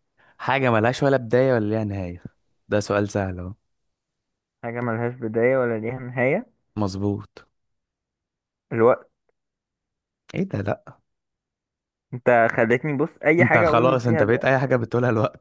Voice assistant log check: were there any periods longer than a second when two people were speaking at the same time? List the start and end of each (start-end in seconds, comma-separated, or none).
13.4-14.7